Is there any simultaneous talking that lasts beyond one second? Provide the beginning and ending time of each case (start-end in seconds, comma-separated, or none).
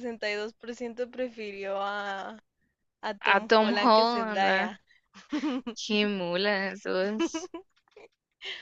3.3-4.7